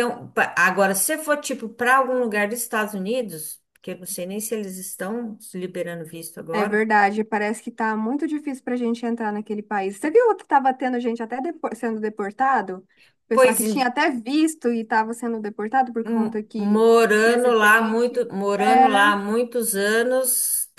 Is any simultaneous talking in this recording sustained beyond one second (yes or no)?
yes